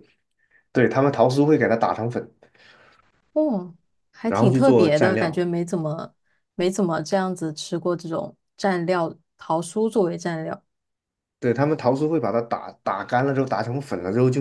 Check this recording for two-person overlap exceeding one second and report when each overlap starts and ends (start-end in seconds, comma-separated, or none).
4.2-5.5